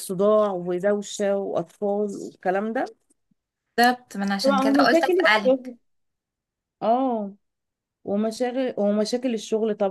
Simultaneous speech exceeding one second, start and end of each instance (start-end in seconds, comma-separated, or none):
4.4-5.7